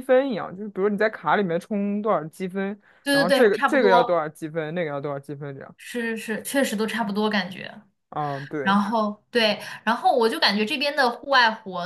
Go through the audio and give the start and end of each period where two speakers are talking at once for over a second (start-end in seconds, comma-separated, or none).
3.0-4.2